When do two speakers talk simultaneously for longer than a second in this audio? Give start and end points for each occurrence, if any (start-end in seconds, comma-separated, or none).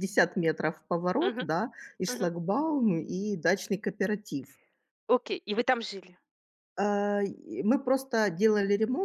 none